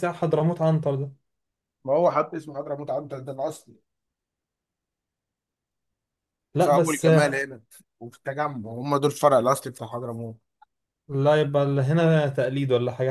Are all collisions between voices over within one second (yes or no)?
yes